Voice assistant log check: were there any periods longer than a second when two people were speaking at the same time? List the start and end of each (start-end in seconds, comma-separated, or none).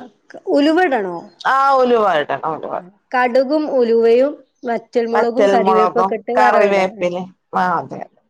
5.1-7.1